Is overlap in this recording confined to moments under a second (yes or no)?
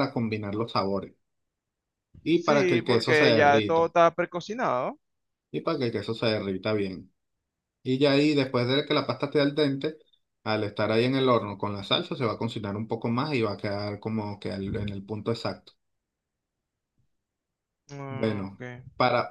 no